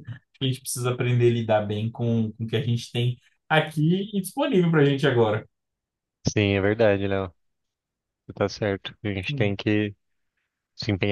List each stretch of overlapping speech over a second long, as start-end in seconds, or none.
none